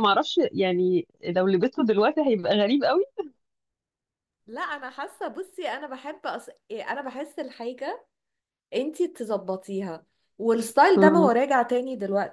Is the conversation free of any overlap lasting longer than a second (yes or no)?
yes